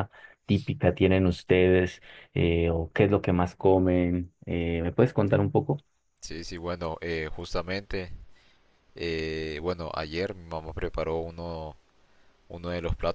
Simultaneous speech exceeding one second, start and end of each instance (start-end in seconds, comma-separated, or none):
none